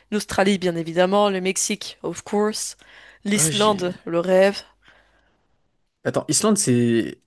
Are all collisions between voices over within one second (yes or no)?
yes